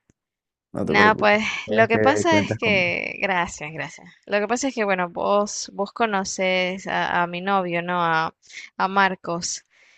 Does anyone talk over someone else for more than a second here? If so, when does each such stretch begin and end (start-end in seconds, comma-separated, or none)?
0.8-2.9